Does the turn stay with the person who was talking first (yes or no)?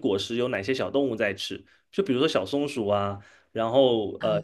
yes